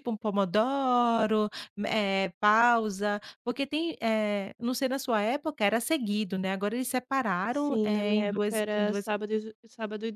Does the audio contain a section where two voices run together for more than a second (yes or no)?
yes